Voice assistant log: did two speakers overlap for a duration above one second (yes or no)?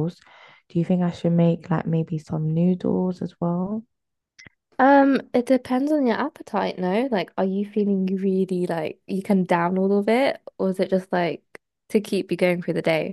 no